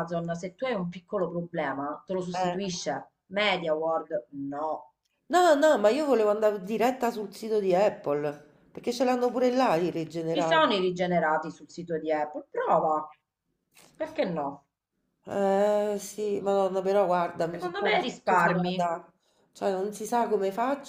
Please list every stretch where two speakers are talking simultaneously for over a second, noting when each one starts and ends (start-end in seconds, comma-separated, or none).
17.5-18.9